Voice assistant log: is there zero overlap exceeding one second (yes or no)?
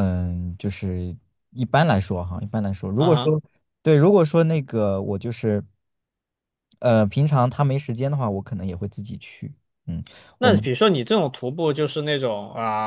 yes